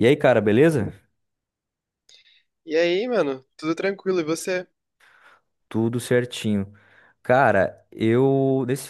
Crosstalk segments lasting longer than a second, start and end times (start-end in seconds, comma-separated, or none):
none